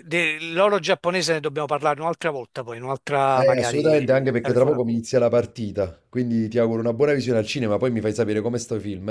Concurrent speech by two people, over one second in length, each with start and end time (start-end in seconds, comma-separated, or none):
3.3-4.8